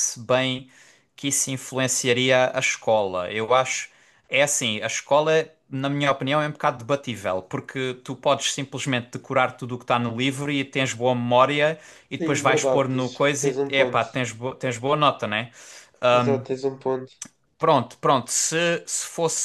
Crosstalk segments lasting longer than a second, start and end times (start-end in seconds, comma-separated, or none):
12.2-14.0